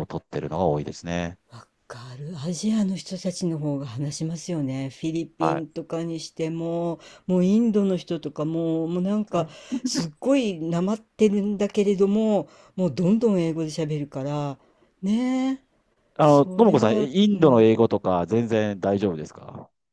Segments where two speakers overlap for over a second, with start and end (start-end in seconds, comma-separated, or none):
16.2-17.7